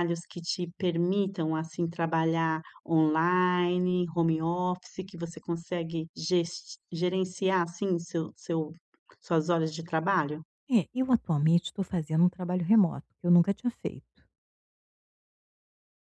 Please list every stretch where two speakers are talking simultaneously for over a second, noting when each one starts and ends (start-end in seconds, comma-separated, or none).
none